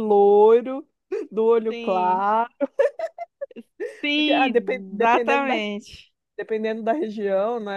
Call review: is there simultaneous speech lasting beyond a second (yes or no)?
yes